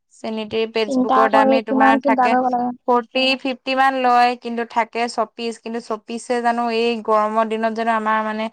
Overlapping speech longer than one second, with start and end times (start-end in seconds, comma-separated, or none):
0.8-2.7